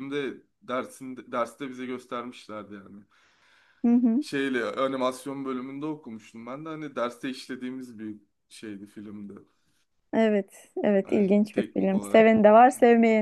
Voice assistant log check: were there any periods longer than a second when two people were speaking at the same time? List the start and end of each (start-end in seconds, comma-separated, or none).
11.0-12.3